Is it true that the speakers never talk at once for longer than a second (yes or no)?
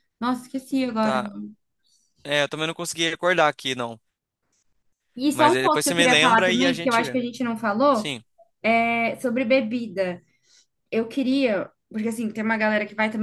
no